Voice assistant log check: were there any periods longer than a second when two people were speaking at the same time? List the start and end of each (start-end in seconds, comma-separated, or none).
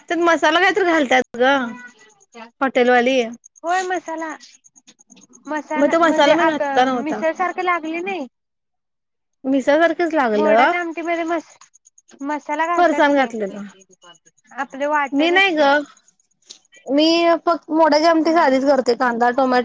none